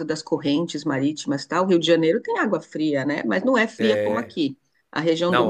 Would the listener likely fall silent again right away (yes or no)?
no